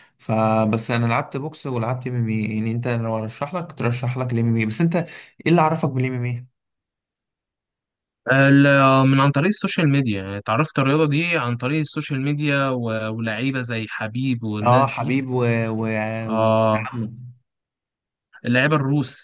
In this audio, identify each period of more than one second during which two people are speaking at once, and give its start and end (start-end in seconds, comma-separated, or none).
none